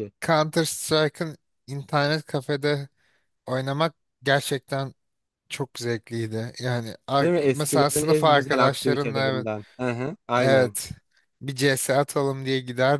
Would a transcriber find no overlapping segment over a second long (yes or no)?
no